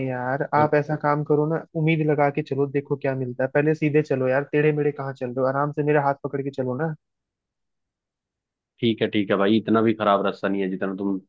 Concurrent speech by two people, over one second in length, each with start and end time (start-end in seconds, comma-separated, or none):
none